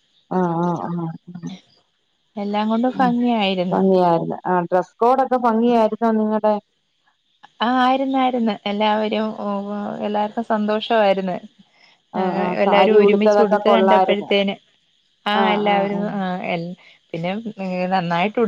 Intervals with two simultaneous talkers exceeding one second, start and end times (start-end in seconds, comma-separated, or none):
12.7-14.3